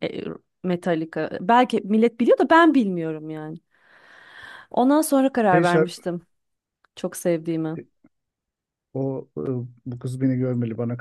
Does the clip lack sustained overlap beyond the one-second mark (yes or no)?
yes